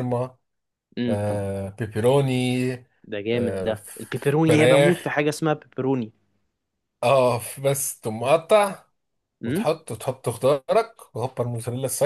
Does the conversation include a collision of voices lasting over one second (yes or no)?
yes